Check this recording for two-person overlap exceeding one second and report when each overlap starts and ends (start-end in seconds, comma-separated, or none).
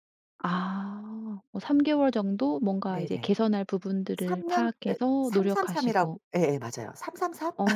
4.2-6.2